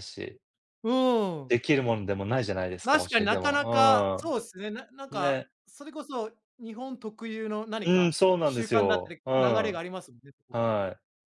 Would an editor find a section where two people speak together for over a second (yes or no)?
yes